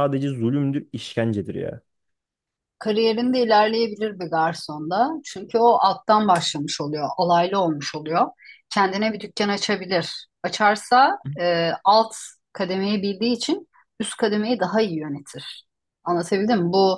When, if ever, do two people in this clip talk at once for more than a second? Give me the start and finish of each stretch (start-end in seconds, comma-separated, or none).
none